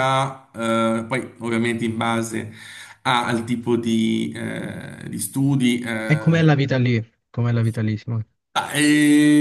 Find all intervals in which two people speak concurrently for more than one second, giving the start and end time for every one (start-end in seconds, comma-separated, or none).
none